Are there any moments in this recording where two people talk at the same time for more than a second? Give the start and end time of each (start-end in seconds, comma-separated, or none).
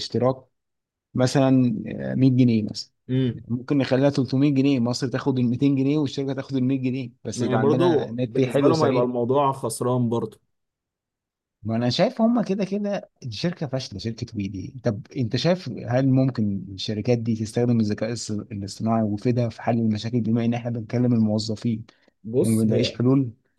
7.3-9.1